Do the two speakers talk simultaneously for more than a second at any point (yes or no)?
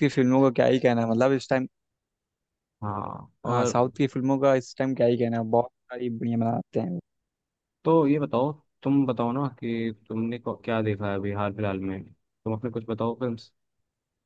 no